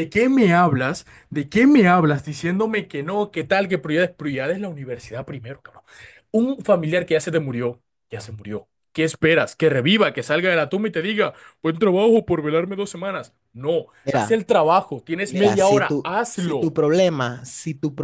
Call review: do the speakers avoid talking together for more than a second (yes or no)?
no